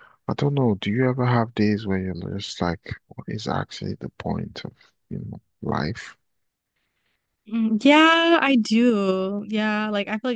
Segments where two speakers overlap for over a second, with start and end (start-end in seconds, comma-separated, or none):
none